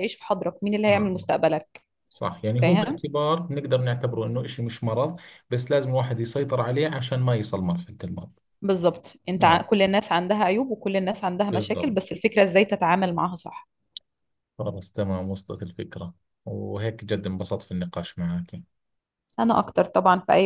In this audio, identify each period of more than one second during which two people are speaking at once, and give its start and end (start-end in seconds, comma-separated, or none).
none